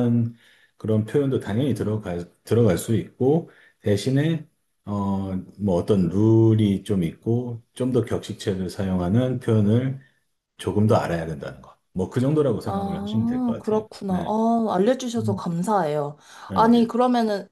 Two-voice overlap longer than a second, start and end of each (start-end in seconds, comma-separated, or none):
12.7-14.4